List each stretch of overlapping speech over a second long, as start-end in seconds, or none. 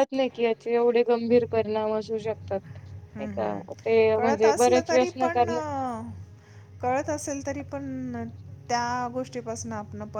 3.1-5.6